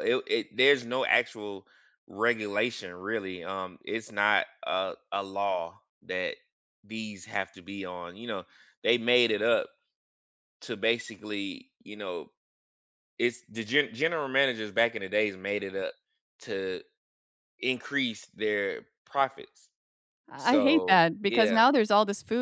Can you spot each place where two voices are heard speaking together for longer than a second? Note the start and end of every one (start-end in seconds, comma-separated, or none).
20.4-21.7